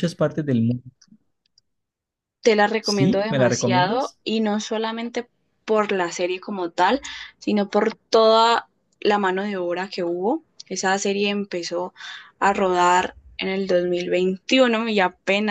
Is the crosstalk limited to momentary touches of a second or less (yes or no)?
no